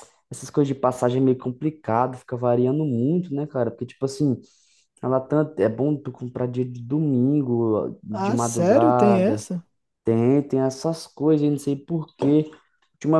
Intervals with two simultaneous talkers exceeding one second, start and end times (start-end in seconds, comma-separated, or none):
8.1-9.4